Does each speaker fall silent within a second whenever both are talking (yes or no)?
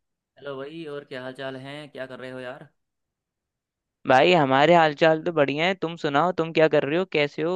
yes